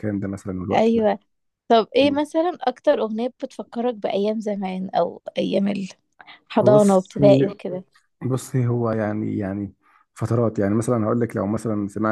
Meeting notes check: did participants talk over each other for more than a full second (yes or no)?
no